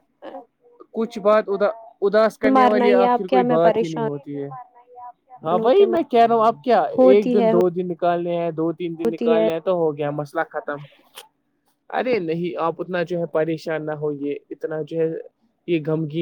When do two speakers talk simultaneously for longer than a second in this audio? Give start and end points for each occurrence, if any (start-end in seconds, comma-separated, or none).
2.5-4.2